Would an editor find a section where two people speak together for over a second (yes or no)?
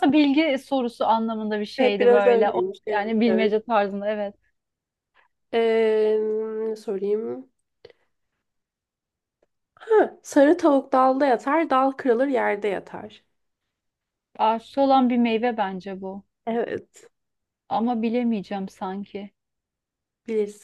yes